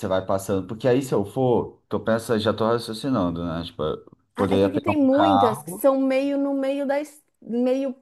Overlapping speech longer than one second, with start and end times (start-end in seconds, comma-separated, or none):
4.3-5.9